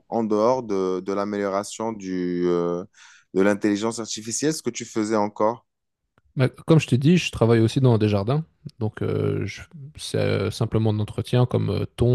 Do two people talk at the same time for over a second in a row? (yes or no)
no